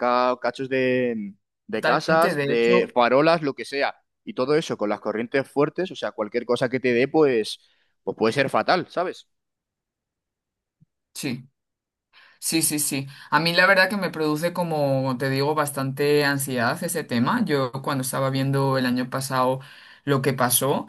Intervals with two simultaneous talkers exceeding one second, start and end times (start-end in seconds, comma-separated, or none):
1.7-2.9